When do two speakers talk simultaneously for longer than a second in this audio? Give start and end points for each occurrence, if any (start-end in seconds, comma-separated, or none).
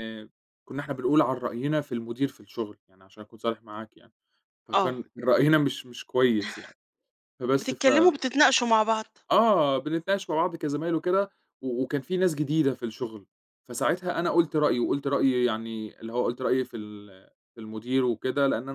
none